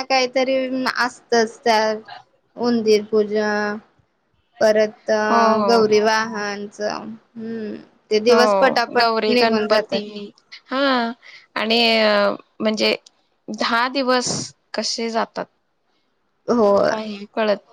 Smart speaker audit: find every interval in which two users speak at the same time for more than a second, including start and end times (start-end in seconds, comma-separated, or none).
8.3-10.0